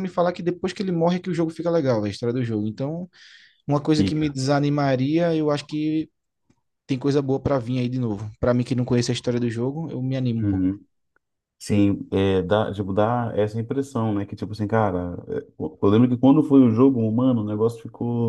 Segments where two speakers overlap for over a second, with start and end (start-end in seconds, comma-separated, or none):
none